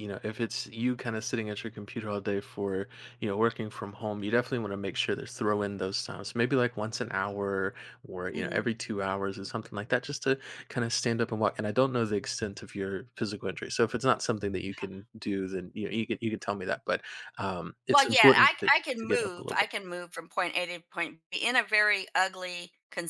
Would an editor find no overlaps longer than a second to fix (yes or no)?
no